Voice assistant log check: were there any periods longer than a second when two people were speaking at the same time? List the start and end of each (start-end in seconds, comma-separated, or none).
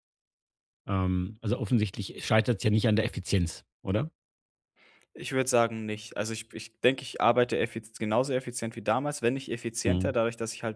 none